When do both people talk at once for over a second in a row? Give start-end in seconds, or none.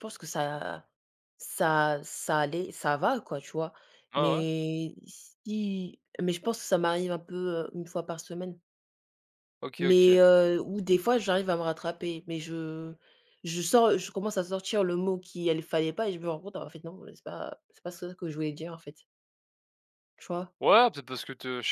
none